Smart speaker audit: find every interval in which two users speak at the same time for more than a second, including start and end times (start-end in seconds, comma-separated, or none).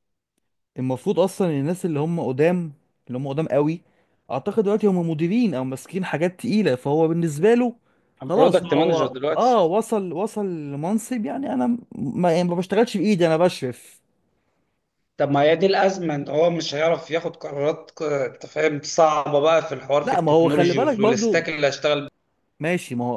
8.2-9.6, 20.0-21.5